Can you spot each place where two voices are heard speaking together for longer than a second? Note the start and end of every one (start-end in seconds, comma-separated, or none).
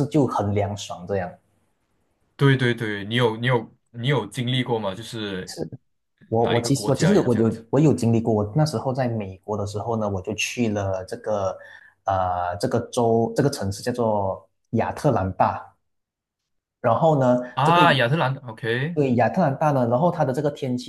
6.4-7.6